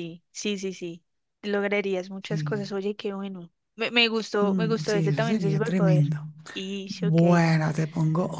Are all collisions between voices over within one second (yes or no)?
no